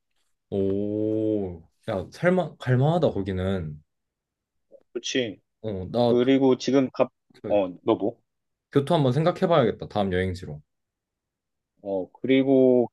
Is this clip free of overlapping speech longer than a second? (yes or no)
yes